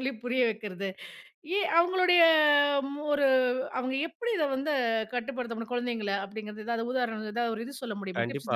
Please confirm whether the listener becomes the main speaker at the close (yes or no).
yes